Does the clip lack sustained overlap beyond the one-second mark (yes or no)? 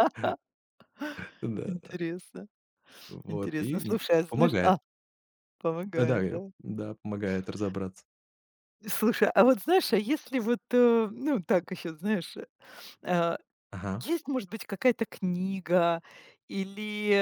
no